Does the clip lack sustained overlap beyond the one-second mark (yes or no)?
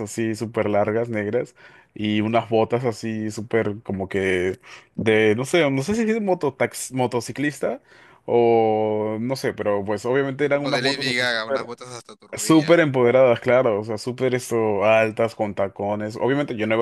no